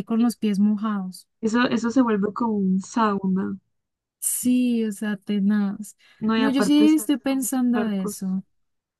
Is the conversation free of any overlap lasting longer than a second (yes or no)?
no